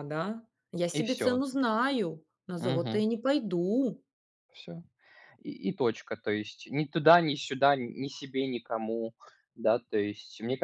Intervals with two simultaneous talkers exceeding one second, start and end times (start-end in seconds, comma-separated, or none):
none